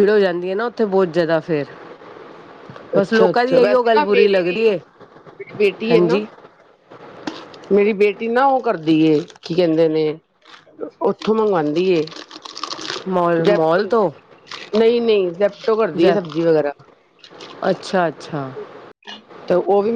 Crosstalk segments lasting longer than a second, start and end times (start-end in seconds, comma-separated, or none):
3.0-4.5